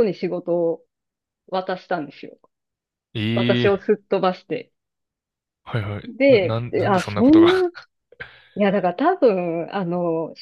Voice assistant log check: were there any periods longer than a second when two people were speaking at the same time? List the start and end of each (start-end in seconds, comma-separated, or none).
6.0-7.5